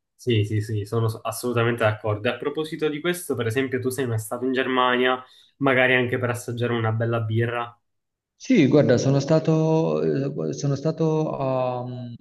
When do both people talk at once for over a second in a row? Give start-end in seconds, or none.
none